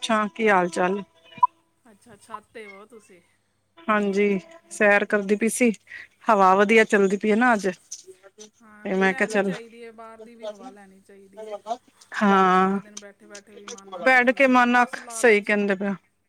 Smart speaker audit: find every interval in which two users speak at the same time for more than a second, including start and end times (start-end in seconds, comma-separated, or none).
14.1-15.6